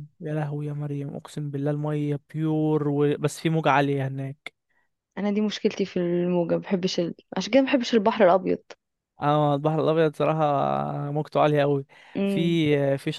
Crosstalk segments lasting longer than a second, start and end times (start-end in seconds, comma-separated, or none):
none